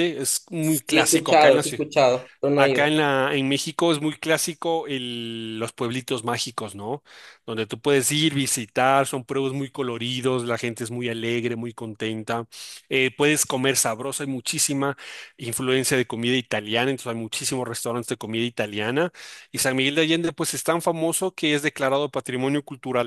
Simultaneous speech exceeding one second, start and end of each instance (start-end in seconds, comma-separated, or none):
0.6-1.8